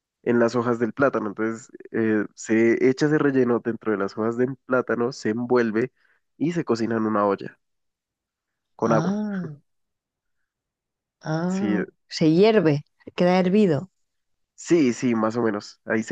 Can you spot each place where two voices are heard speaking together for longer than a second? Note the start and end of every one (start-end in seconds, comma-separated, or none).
none